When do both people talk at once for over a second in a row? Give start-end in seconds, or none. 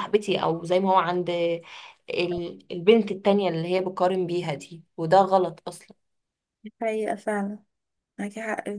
none